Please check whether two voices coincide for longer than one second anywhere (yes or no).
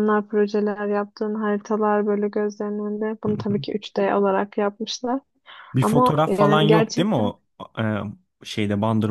yes